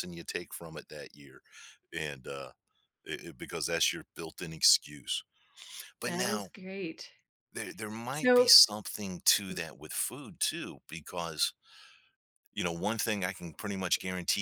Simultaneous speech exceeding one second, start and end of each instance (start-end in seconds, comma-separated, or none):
none